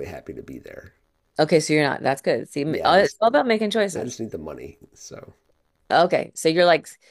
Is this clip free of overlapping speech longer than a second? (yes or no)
yes